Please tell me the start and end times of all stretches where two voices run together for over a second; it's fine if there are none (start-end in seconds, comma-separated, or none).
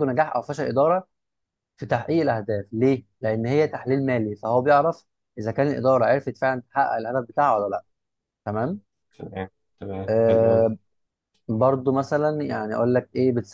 none